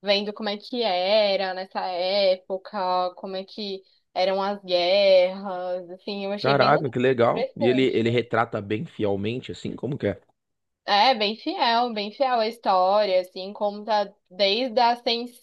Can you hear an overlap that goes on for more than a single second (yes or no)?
yes